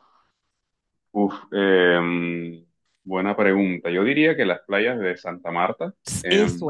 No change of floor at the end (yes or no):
no